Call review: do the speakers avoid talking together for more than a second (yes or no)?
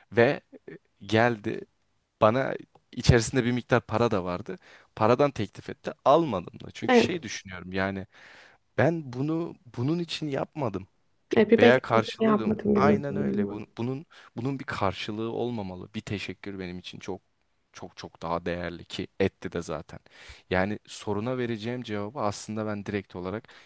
no